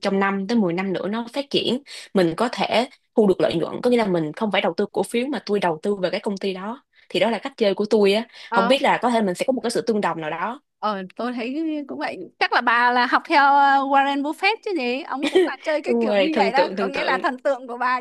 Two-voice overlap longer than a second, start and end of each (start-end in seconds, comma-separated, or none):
15.9-17.2